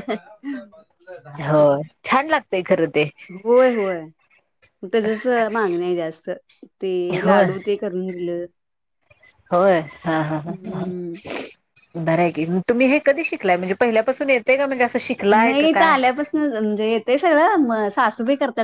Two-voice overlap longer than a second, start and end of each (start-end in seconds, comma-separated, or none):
none